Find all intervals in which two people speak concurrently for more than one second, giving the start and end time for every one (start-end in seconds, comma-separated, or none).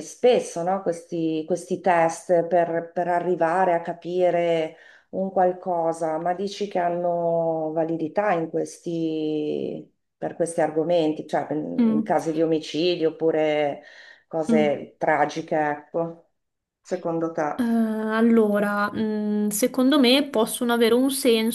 none